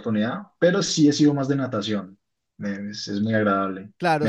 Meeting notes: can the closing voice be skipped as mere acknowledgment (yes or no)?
no